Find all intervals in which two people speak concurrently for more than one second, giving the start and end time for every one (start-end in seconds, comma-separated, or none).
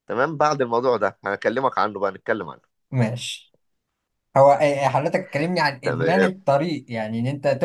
none